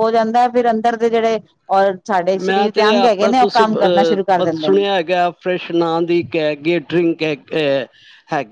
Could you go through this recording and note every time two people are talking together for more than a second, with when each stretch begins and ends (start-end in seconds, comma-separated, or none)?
2.4-4.8